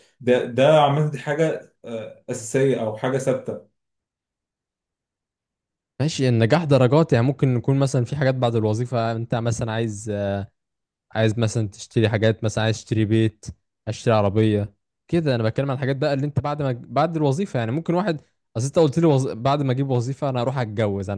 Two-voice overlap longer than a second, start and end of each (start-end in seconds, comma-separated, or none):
none